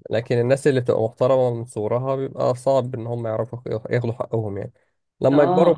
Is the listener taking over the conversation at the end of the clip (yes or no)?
no